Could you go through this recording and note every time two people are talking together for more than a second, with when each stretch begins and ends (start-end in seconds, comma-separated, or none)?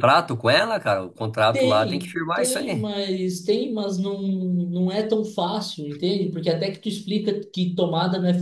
1.5-2.9